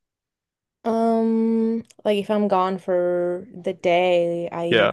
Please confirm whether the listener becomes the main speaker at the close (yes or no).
no